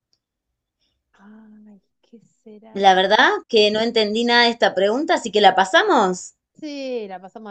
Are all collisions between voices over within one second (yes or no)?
yes